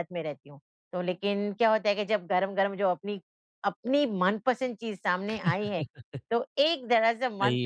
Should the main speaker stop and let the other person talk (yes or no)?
no